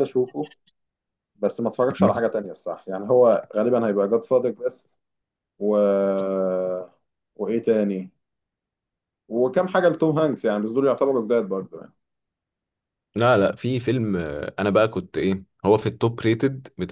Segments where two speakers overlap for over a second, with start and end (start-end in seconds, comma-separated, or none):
none